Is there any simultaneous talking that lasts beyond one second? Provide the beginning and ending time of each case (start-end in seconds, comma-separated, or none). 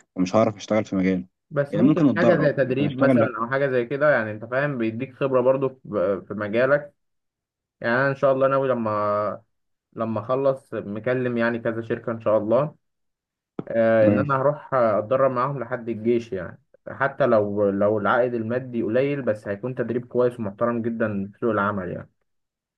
1.7-3.3